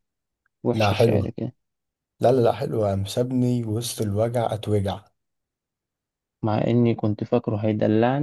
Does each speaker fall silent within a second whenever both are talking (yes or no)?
yes